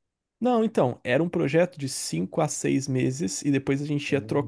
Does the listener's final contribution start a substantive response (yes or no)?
no